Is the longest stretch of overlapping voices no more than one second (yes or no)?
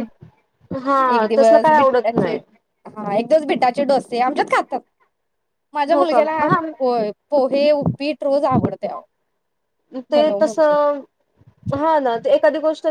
no